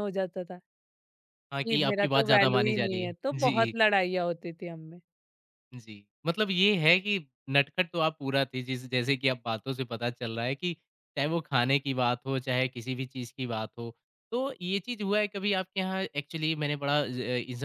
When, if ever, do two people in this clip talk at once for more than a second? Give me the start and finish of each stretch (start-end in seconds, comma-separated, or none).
1.7-3.7